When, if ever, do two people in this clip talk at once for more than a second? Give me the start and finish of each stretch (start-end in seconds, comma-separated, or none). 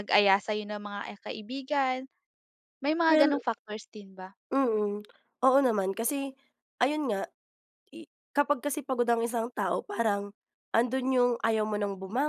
none